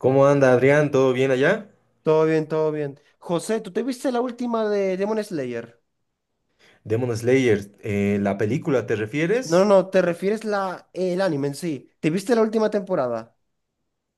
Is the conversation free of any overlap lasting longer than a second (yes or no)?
yes